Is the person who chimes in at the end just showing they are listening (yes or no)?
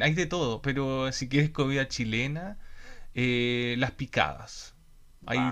yes